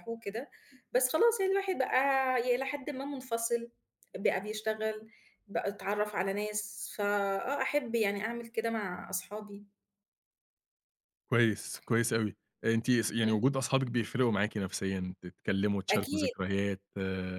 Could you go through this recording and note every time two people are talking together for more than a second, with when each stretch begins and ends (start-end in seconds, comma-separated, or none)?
none